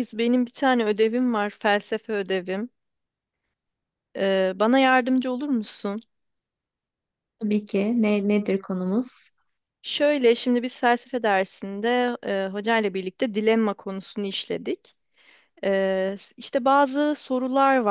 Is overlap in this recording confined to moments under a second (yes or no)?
yes